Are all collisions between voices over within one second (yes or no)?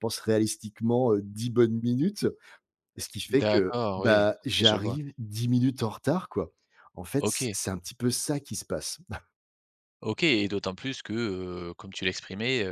no